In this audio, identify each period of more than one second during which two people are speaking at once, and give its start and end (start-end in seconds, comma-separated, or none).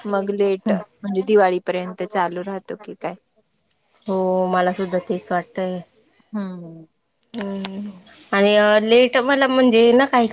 none